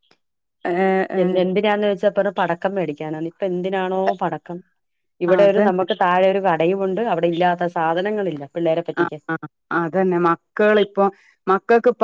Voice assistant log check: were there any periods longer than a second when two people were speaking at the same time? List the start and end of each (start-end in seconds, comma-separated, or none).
none